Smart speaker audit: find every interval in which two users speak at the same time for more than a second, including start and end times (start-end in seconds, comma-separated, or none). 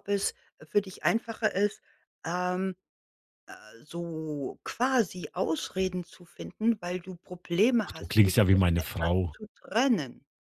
7.8-9.3